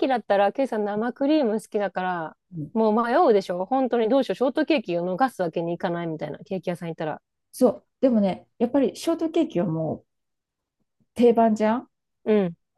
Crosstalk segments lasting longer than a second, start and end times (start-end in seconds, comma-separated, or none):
none